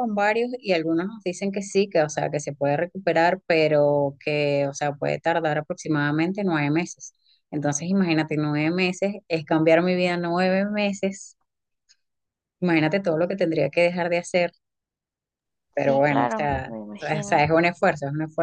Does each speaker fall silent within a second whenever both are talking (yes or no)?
no